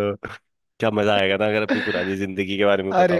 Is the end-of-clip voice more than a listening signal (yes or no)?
yes